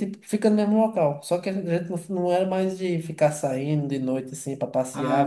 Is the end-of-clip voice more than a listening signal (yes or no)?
yes